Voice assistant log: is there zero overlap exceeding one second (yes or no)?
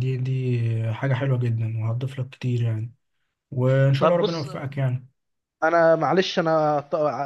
yes